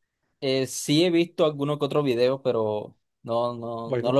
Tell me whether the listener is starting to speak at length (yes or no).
yes